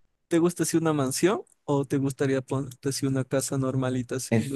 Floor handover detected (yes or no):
yes